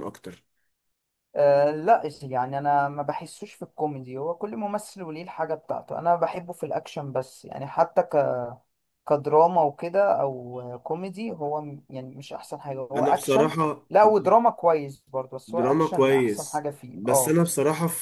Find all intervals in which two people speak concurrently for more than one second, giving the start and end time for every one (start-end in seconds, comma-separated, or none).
15.5-17.4